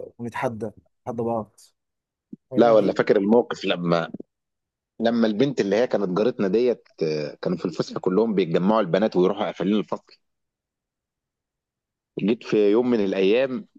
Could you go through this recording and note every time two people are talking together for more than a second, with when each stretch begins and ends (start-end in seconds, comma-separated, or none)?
none